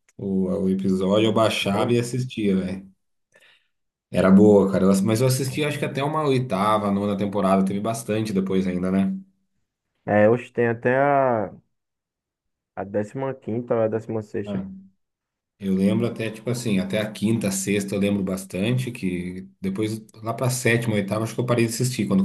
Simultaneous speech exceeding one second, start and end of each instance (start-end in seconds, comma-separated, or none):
none